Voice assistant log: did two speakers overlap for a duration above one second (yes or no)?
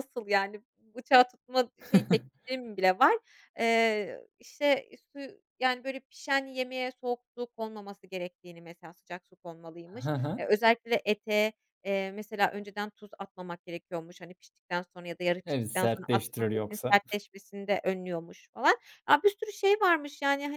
yes